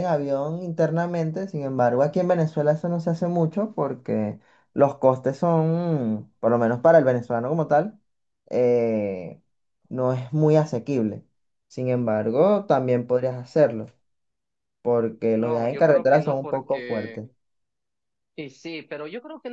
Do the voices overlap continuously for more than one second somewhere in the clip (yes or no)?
yes